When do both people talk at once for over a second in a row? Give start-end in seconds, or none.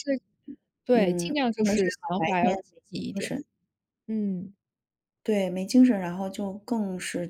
0.9-3.4